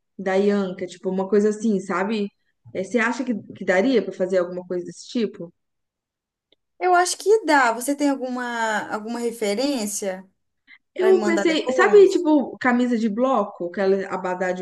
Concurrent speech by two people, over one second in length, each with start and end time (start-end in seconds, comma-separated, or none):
11.0-12.2